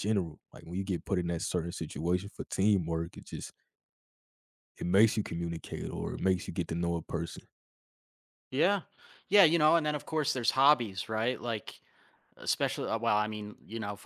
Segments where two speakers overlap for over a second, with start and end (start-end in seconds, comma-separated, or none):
none